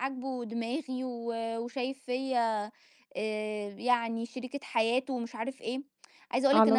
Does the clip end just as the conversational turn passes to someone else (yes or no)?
yes